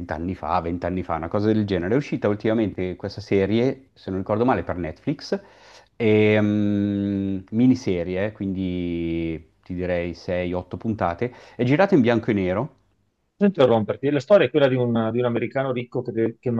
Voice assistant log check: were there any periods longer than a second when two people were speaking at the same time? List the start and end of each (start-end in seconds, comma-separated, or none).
none